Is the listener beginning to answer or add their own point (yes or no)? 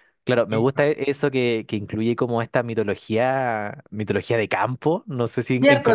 yes